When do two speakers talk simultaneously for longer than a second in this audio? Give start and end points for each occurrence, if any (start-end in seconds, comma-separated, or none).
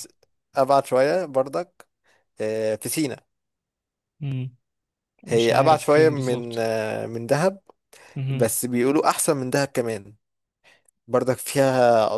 5.3-6.7